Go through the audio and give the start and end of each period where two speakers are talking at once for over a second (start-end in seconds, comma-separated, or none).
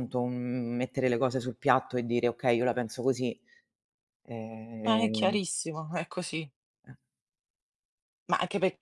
none